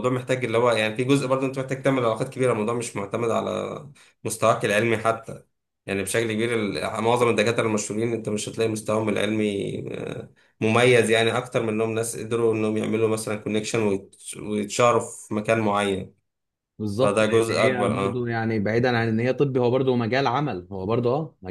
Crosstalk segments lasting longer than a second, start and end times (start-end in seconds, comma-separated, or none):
17.0-18.3